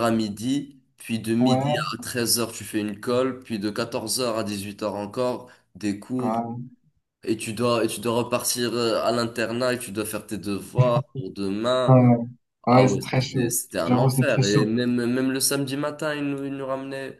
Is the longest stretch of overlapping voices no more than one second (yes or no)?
no